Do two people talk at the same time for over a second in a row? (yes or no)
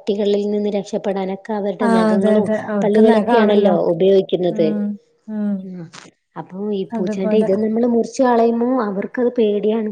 yes